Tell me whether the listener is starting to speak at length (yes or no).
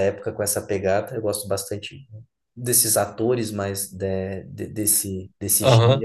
yes